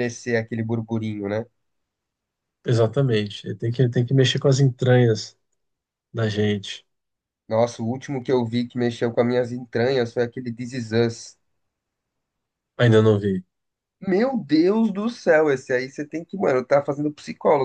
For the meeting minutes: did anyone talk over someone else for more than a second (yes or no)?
no